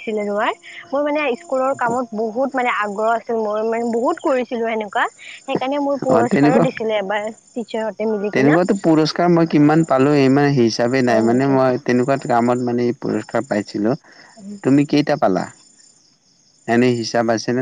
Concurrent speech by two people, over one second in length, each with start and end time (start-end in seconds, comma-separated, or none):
none